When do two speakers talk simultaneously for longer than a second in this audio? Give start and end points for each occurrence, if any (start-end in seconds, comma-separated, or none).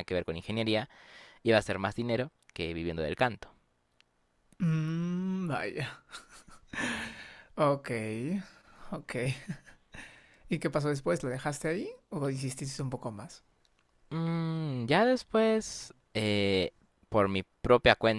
none